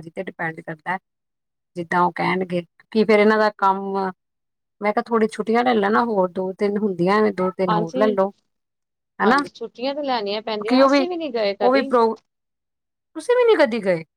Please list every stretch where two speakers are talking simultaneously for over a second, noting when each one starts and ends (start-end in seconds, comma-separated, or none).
none